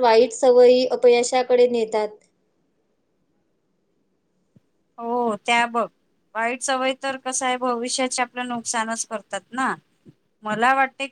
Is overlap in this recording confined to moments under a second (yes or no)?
yes